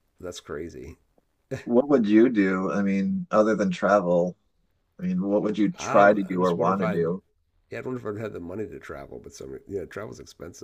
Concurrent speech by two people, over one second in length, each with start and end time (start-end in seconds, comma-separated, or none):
5.8-7.0